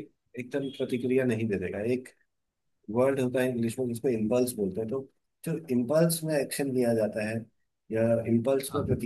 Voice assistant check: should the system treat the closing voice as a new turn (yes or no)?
no